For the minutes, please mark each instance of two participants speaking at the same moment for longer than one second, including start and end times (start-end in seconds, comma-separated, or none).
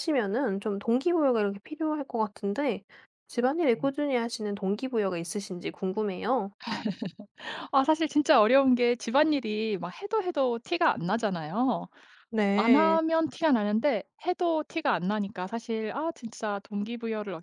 none